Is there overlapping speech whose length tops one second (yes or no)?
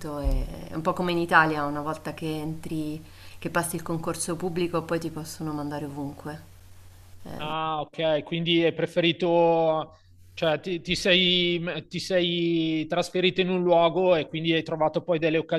no